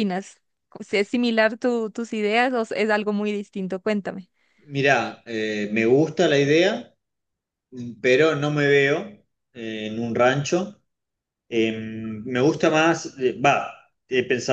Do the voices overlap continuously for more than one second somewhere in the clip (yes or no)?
no